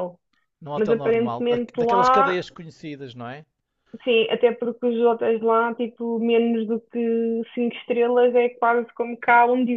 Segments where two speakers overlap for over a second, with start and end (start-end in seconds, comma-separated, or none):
0.8-2.4